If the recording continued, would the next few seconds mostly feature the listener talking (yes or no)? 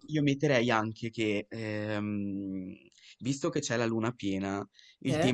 no